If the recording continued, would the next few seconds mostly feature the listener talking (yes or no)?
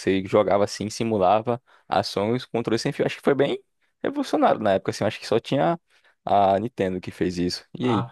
yes